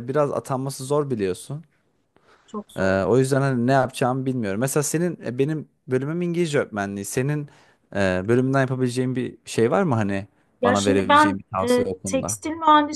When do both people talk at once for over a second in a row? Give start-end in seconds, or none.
10.6-12.4